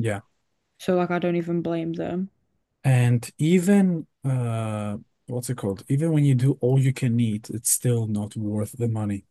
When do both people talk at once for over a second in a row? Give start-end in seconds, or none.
none